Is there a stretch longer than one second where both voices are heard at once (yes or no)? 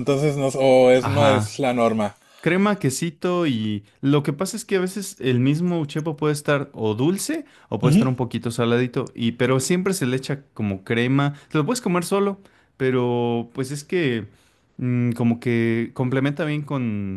no